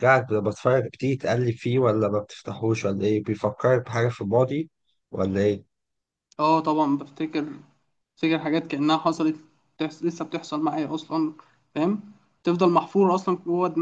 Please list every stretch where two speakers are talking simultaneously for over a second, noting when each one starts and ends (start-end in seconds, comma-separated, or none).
none